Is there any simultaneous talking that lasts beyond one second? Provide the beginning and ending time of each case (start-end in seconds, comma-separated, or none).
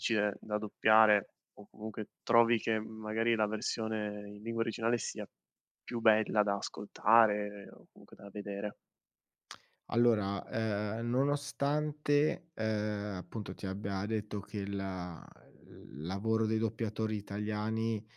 none